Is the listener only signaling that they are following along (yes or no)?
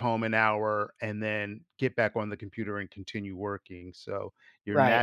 no